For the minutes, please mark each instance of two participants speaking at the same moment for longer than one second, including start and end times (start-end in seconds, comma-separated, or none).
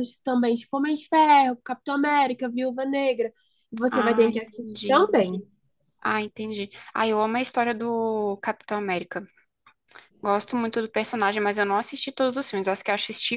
3.9-5.2